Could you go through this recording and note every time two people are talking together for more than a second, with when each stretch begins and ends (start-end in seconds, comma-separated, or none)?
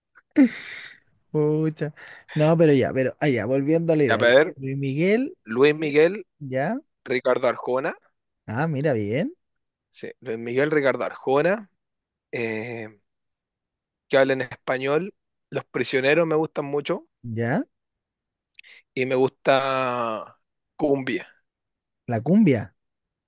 none